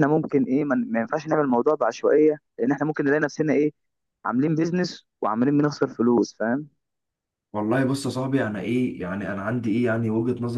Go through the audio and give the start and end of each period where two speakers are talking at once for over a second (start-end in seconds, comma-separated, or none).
none